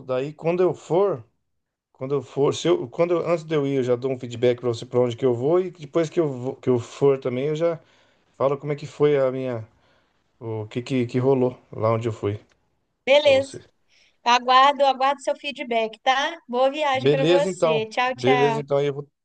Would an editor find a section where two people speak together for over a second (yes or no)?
yes